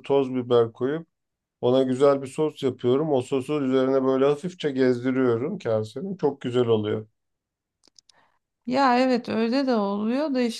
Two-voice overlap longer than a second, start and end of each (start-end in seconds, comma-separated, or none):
none